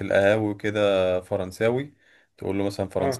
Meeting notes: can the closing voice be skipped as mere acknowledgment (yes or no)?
yes